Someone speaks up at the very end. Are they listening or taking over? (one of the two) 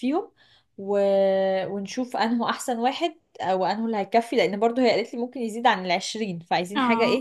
taking over